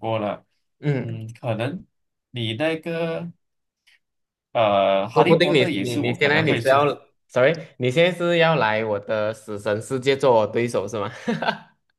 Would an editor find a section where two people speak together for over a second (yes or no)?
yes